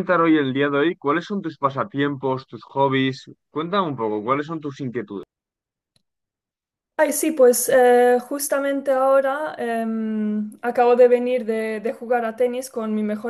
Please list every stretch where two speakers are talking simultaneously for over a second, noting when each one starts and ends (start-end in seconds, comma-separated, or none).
none